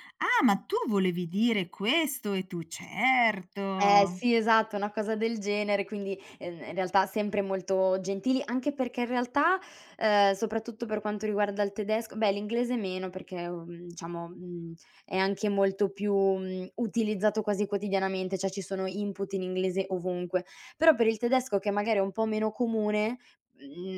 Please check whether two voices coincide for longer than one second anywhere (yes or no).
no